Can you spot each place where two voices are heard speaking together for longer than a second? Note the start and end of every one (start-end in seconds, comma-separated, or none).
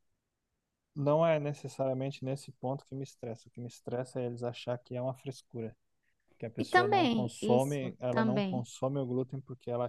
6.6-8.7